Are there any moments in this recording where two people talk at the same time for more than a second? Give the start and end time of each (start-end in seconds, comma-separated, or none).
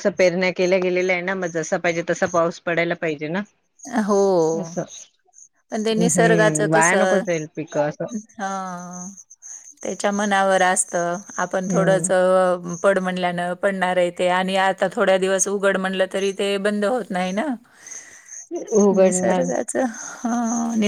6.0-7.3